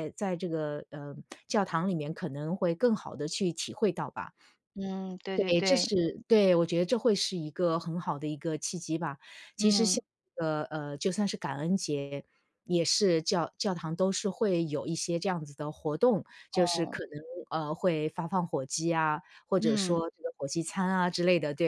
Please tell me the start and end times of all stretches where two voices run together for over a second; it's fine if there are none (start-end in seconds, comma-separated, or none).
none